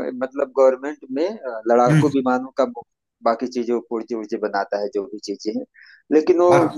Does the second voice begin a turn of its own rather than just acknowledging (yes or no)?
no